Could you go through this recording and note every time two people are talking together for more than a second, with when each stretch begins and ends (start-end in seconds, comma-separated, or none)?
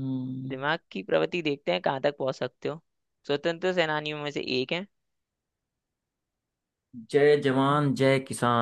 none